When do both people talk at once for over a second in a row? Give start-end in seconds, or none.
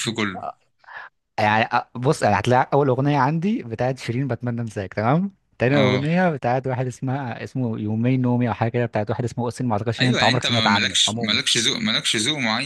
10.0-11.4